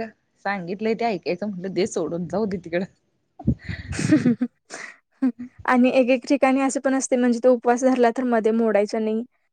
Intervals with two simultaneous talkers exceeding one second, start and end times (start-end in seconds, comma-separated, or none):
none